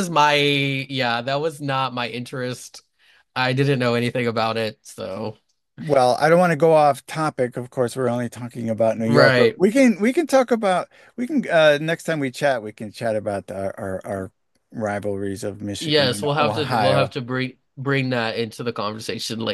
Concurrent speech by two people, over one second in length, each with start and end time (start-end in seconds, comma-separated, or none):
15.8-17.1